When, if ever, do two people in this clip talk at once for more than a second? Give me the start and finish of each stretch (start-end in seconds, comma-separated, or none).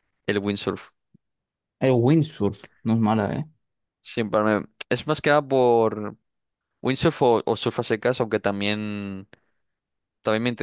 none